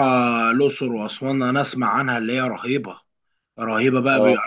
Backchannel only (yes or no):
yes